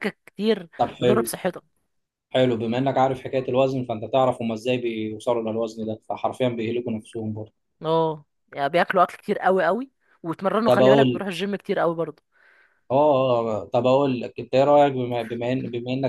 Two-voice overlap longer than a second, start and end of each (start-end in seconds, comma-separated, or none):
none